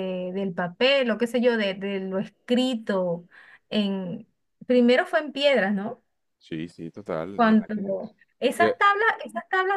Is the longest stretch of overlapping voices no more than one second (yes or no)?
yes